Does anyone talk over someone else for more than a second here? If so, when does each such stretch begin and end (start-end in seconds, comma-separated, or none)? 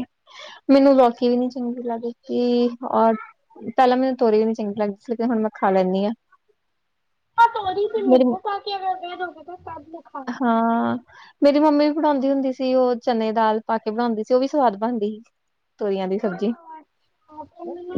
none